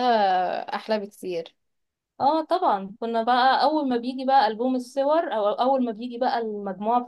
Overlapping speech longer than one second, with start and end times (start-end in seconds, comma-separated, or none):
none